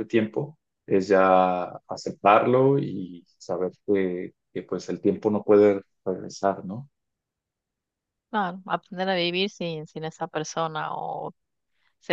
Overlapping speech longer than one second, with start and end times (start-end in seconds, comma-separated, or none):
none